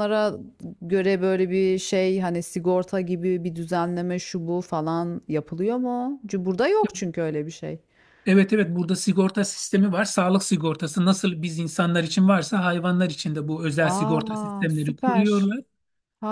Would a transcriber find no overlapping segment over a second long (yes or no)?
no